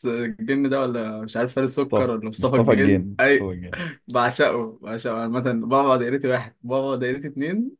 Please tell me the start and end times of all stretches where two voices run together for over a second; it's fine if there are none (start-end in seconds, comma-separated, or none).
1.8-3.5